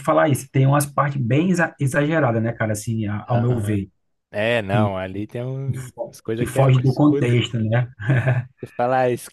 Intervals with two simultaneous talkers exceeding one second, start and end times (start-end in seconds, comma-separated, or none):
5.7-7.3